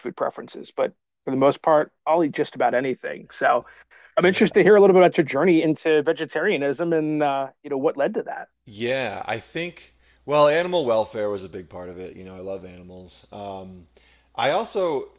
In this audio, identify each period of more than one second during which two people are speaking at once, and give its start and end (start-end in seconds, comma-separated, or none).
none